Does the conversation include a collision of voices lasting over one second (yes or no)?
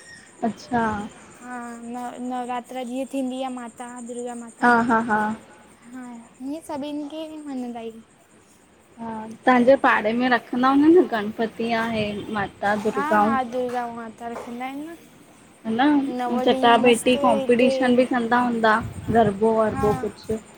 yes